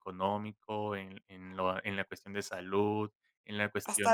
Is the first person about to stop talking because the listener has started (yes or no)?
yes